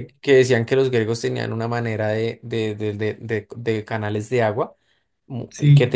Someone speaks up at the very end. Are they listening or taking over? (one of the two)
listening